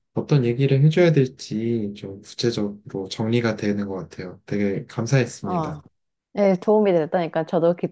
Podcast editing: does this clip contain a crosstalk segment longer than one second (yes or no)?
no